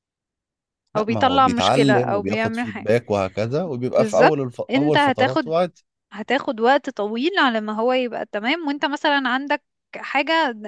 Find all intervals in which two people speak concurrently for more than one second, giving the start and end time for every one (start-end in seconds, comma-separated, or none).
1.0-2.9, 3.8-5.5